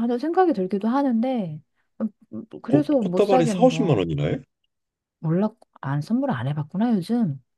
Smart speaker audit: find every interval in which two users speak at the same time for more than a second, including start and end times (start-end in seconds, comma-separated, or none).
2.7-4.0